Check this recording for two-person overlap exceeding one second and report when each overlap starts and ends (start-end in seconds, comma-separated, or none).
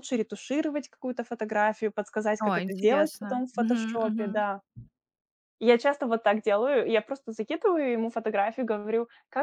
2.4-4.3